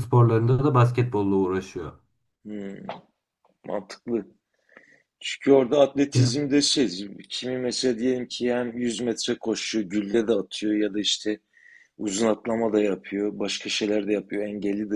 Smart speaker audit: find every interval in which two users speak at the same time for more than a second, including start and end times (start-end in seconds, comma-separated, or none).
none